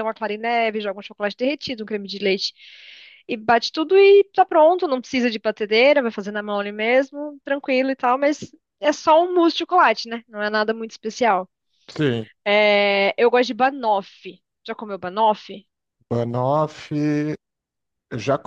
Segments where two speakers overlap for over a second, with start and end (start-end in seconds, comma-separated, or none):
none